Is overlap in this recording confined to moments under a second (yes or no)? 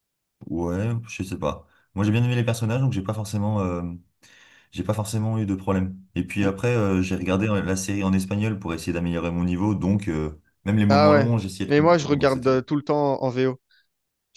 no